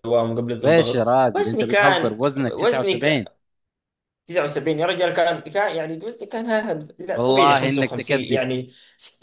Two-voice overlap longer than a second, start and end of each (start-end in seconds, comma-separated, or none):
0.6-3.3, 7.2-8.4